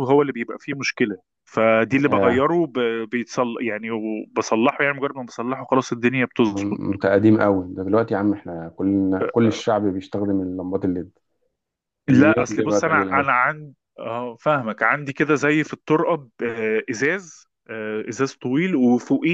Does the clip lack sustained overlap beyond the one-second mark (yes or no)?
no